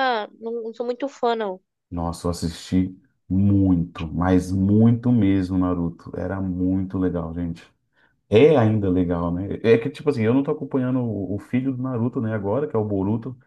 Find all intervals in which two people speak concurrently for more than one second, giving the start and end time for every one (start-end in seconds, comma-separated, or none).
none